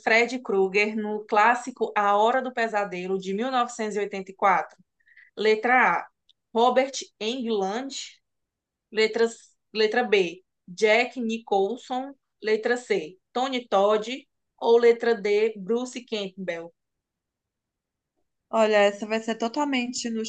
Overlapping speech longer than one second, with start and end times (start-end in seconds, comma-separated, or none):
none